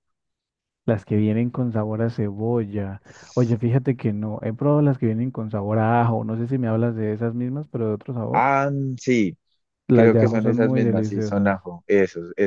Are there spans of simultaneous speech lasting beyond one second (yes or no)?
yes